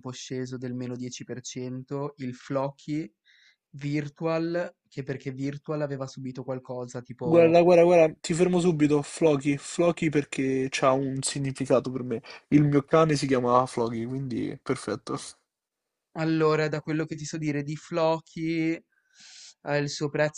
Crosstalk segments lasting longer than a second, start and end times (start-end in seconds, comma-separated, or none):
none